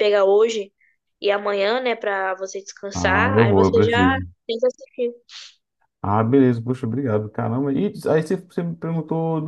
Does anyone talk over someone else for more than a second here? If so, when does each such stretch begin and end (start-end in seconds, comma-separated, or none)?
2.9-4.3